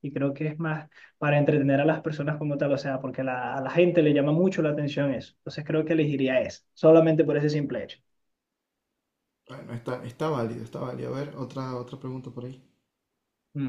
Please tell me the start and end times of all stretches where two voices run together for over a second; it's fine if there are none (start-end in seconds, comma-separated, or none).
none